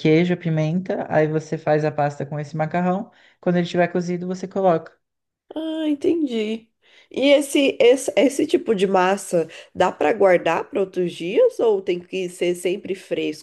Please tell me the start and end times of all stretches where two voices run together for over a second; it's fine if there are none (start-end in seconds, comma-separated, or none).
none